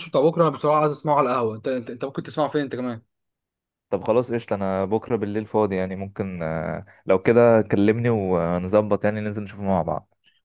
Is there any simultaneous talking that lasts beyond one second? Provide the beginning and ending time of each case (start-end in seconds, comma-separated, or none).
none